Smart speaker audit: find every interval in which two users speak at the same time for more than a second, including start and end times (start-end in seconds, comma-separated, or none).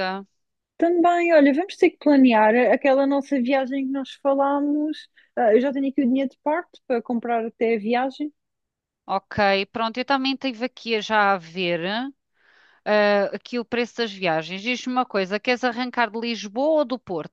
none